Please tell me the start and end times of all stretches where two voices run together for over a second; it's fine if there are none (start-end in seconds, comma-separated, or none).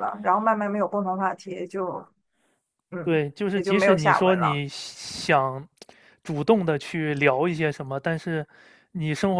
3.0-4.6